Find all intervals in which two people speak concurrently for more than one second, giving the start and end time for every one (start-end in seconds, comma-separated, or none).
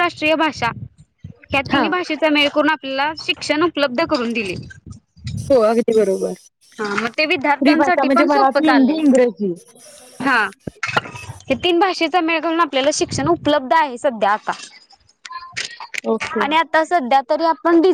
7.6-9.0